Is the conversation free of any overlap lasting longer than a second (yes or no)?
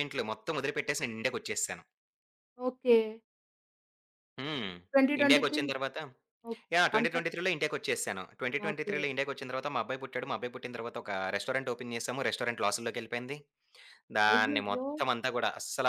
yes